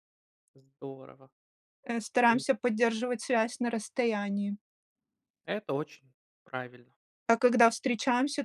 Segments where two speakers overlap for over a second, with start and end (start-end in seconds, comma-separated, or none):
none